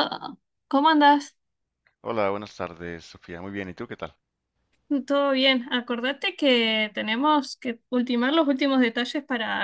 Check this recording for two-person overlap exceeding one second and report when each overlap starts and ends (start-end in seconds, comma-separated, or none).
none